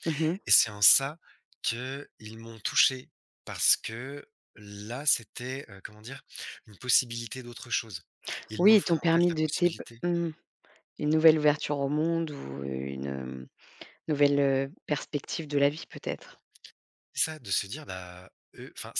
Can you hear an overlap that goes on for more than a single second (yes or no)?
yes